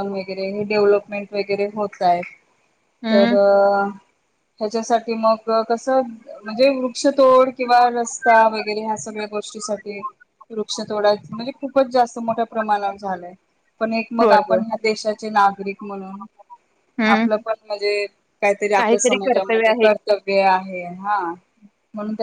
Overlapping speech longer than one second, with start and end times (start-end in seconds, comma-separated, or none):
none